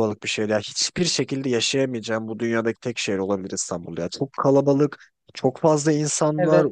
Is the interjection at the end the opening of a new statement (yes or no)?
no